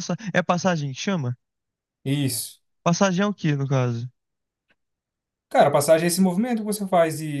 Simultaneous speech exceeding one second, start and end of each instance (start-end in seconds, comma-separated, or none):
none